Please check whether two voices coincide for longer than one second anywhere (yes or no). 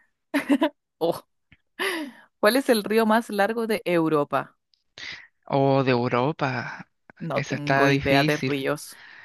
yes